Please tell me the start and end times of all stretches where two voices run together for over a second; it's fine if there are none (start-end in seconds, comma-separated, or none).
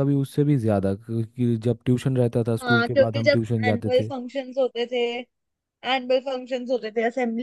2.6-4.1